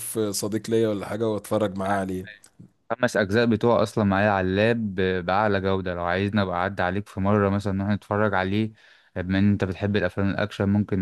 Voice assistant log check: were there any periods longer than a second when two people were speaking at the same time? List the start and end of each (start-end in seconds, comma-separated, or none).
none